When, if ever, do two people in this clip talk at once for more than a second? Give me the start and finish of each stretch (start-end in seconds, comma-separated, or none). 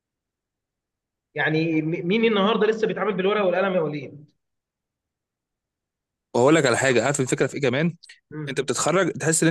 none